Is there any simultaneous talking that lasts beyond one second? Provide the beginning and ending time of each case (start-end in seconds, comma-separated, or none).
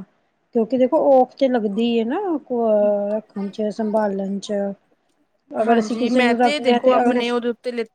5.6-7.2